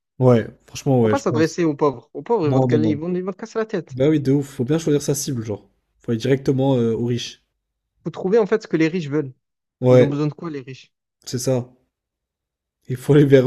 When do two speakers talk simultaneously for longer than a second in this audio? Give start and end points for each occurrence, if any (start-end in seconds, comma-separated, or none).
none